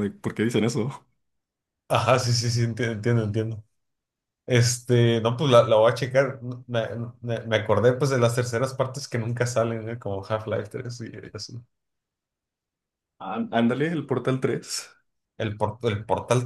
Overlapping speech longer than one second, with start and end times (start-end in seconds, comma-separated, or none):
none